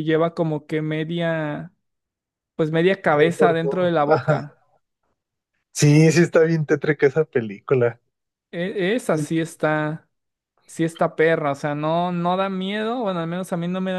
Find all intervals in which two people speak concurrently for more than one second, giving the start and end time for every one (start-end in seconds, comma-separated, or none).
3.1-4.5